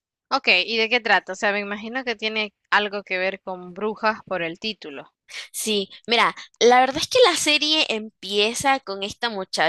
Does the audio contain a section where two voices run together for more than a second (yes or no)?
no